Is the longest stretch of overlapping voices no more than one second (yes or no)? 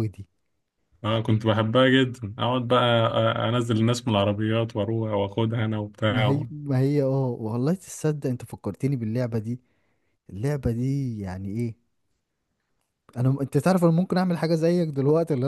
yes